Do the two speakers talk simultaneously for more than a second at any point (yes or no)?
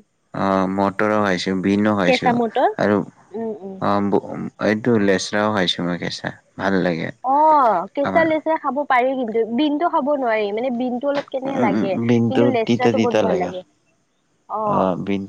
yes